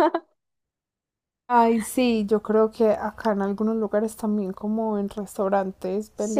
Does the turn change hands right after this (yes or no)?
yes